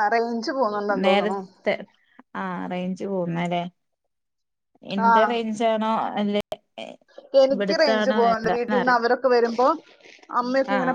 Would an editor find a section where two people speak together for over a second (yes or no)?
yes